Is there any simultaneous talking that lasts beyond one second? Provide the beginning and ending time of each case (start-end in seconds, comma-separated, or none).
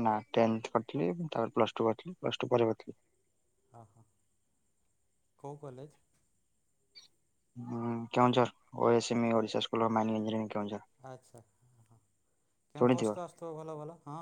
none